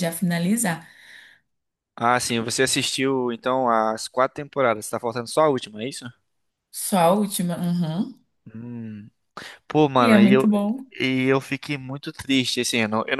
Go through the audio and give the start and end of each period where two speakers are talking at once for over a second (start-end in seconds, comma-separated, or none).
none